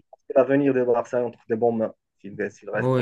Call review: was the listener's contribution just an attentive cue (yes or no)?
no